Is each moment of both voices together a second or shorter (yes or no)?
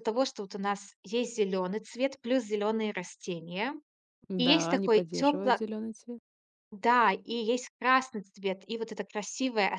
no